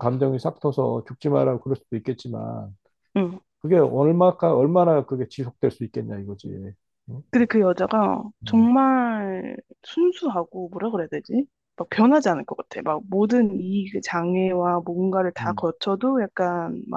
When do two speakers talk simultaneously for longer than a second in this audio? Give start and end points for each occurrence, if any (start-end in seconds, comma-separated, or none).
none